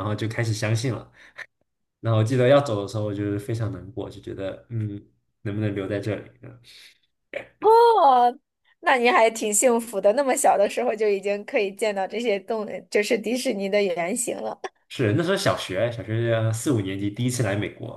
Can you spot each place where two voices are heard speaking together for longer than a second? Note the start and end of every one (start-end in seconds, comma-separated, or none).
none